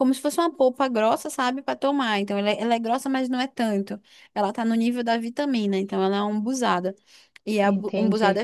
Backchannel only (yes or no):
yes